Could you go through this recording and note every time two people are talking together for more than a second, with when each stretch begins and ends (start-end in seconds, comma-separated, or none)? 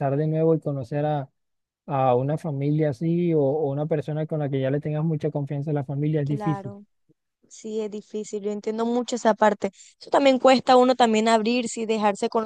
none